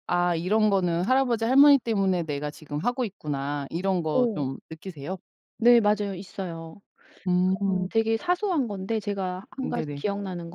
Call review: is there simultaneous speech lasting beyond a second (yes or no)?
no